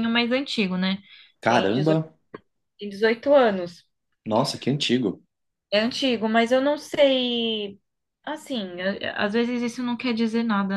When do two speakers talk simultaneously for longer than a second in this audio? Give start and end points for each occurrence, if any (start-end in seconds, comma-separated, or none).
none